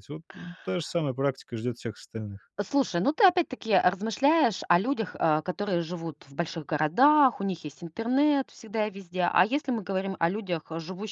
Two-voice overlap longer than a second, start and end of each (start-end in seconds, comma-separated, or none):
none